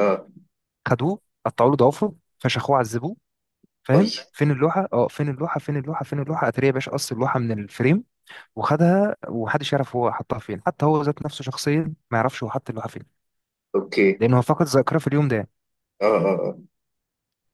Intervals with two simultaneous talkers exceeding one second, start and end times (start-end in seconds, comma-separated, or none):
none